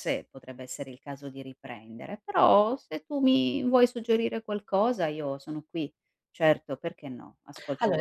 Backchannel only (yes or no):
no